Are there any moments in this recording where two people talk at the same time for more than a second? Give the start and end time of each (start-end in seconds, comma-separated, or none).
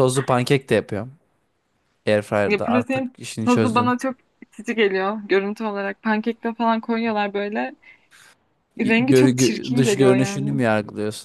2.5-3.9, 8.8-10.6